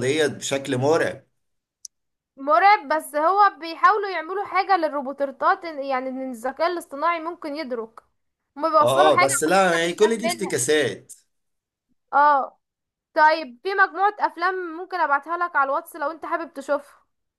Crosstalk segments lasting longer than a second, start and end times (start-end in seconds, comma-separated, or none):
8.8-10.6